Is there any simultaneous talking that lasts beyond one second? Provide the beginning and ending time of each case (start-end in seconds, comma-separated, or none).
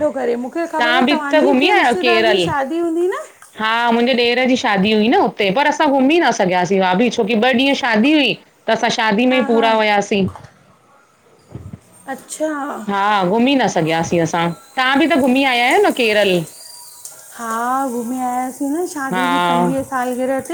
0.8-2.5